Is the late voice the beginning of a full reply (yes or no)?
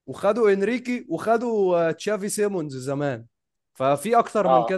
no